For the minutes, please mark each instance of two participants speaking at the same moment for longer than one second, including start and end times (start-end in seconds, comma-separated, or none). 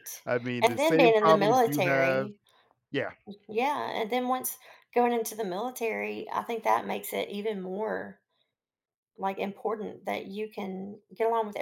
0.6-2.3